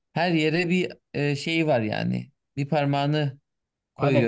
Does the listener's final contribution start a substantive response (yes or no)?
yes